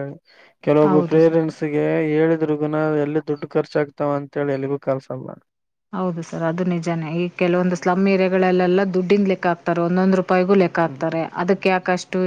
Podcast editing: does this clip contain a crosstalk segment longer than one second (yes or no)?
no